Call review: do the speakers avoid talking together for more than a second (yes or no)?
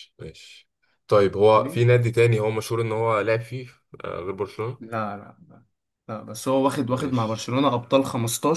yes